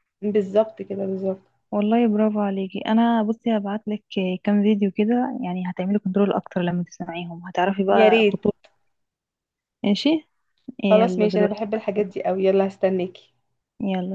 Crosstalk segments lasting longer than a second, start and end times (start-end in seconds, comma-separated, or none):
10.8-12.3